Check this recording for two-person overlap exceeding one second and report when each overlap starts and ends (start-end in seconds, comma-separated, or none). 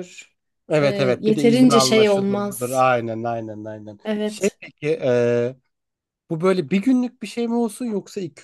0.8-2.9